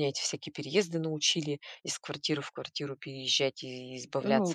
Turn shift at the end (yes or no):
yes